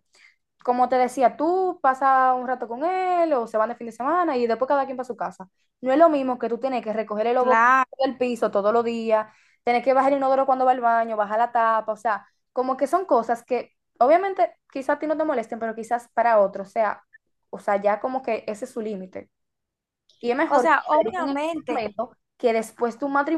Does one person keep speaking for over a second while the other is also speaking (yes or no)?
yes